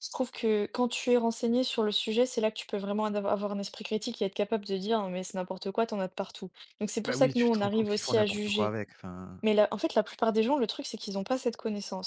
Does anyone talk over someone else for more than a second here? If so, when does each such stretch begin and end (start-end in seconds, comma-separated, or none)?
7.0-8.8